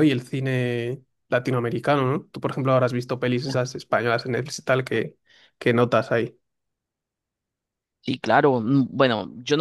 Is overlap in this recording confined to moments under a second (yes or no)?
yes